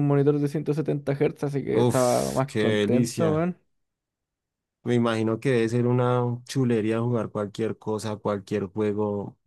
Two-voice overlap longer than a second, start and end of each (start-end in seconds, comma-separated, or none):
1.7-3.5